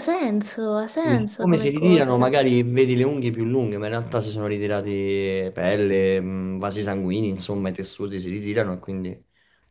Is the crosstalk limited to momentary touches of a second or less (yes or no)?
no